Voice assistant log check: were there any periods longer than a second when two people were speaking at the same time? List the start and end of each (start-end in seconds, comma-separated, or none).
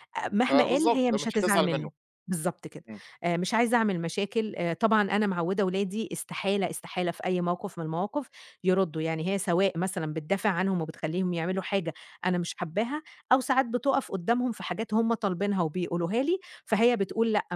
0.5-1.9